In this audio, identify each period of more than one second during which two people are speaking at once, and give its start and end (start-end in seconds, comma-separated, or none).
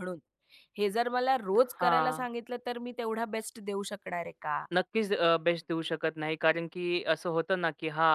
none